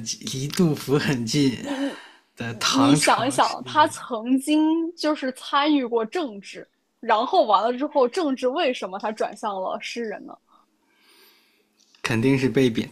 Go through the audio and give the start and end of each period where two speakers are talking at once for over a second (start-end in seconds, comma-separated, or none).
2.7-4.0